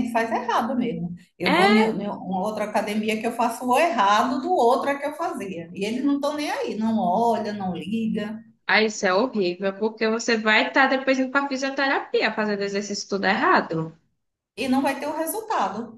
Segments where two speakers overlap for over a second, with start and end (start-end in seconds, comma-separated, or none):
none